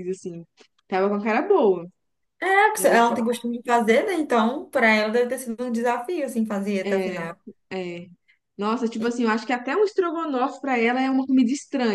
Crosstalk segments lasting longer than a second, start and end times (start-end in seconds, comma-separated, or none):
none